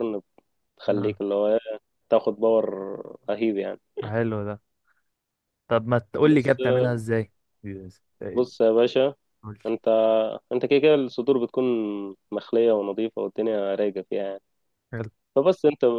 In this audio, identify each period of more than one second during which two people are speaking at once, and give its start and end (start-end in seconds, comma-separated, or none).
none